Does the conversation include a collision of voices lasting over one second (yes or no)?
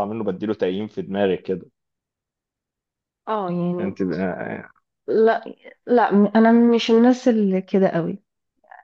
no